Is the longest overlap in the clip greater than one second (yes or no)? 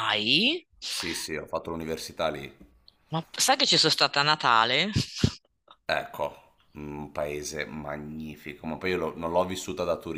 no